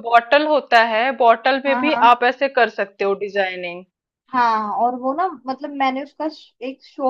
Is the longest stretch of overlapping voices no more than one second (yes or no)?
yes